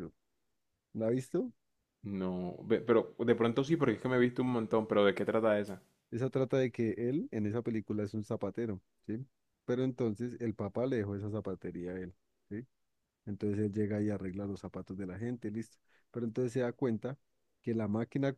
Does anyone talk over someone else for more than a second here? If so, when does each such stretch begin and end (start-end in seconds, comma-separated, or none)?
none